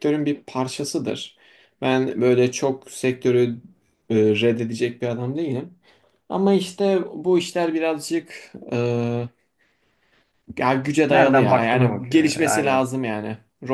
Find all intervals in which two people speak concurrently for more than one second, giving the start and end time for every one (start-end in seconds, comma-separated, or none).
11.1-12.9